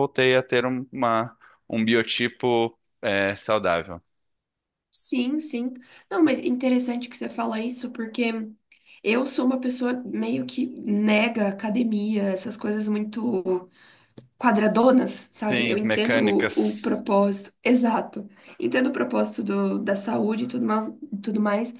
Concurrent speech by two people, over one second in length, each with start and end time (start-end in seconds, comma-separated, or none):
15.3-17.0